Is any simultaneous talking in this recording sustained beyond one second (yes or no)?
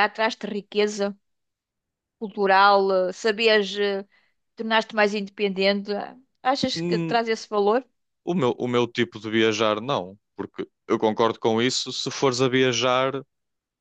no